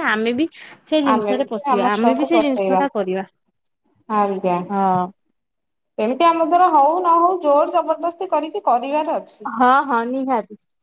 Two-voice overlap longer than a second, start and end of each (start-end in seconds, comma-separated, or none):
1.1-2.8